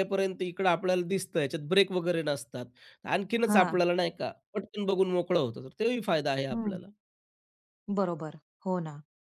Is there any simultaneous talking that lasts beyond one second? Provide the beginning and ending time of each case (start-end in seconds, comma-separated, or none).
none